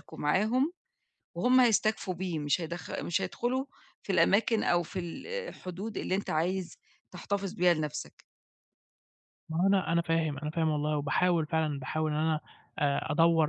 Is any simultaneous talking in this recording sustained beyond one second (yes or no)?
no